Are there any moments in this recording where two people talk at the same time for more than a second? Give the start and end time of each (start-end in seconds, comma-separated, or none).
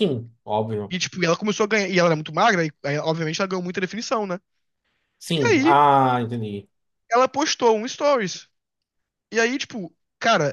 none